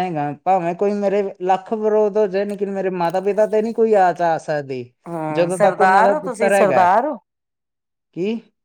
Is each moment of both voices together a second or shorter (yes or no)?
no